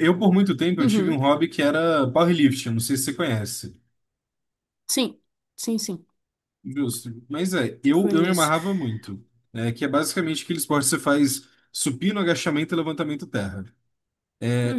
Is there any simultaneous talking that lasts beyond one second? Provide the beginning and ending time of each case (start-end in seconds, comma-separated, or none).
none